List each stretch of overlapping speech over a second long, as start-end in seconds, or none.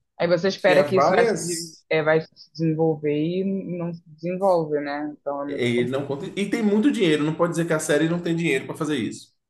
0.6-1.8